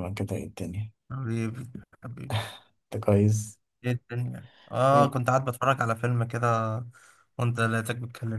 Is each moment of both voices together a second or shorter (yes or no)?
yes